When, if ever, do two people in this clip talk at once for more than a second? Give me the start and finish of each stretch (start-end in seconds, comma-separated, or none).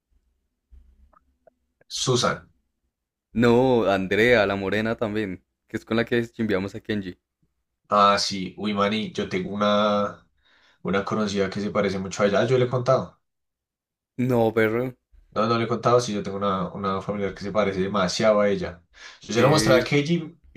none